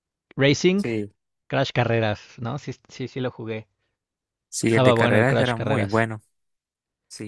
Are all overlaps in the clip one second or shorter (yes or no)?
no